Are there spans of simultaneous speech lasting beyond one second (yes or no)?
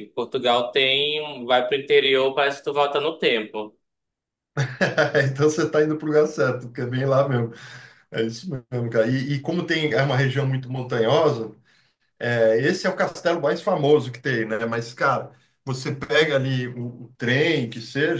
no